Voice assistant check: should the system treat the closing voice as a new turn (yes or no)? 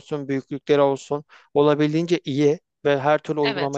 no